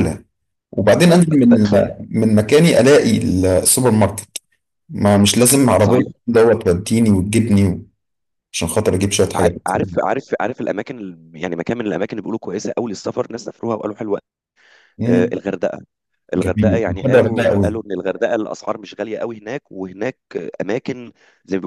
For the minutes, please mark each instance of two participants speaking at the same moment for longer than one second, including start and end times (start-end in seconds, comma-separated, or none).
16.4-17.8